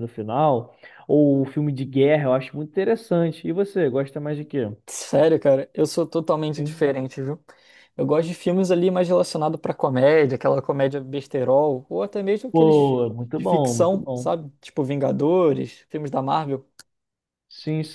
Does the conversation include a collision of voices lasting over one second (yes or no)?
yes